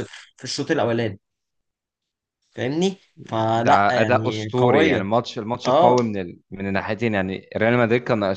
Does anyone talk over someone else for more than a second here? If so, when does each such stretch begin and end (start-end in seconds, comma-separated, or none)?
3.6-5.0